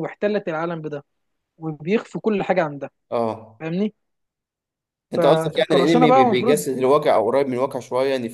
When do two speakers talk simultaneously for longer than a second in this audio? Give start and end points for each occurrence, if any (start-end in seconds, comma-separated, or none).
5.2-6.7